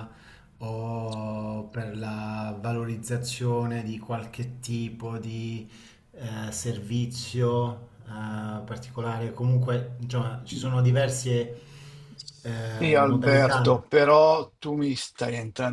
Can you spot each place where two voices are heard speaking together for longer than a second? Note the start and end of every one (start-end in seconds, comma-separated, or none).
12.4-13.8